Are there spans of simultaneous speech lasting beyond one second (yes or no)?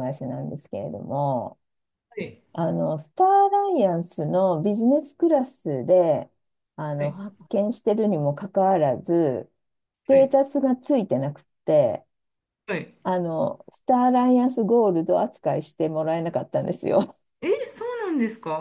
no